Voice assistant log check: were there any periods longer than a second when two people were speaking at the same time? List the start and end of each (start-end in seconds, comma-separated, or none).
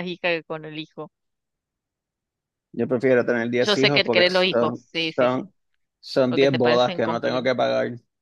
3.6-5.4, 6.3-7.5